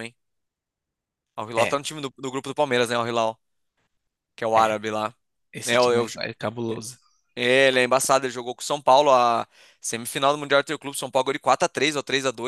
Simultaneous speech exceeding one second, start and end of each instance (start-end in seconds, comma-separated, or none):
none